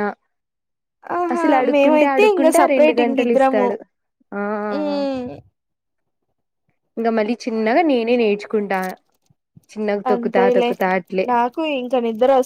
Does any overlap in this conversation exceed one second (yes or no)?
yes